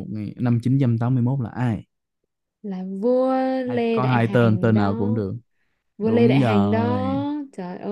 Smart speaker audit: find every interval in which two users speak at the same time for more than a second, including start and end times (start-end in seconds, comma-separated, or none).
3.7-5.2, 6.0-7.2